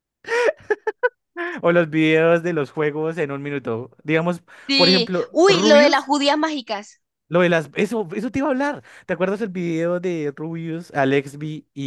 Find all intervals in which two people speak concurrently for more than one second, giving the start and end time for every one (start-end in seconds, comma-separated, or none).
4.7-6.1